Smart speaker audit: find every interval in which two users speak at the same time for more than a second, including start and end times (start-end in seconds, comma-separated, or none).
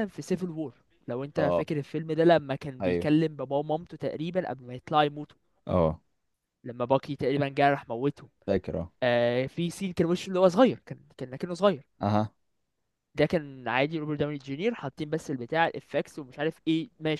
none